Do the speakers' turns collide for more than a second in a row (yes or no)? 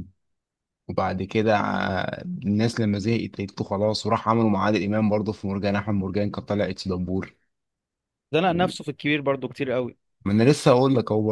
no